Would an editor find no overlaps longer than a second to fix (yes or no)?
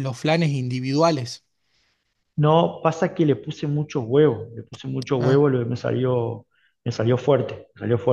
yes